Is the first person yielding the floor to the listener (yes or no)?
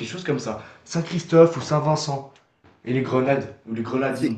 yes